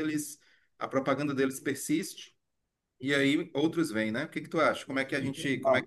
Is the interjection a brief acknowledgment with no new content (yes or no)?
yes